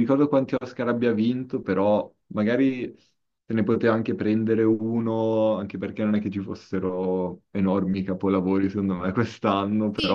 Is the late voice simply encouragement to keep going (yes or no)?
no